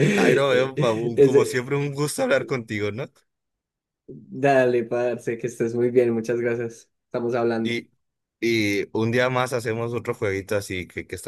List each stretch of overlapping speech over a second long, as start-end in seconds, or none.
0.5-1.7